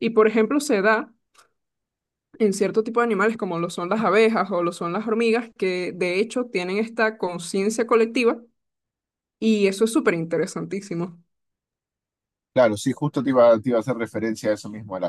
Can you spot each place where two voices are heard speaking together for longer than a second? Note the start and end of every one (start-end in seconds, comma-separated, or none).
none